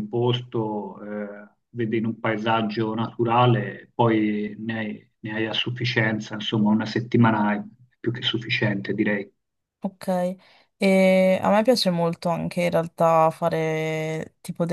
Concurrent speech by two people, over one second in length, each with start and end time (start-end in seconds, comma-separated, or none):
none